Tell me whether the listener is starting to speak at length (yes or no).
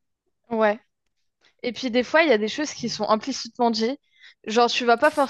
no